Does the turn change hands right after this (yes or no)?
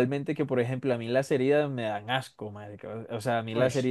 no